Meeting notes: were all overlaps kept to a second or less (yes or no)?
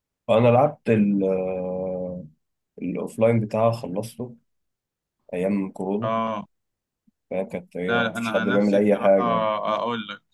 no